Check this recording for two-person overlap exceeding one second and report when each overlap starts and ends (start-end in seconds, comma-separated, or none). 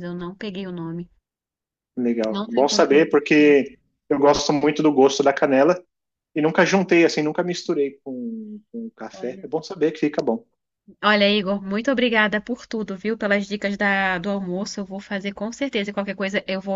2.3-3.6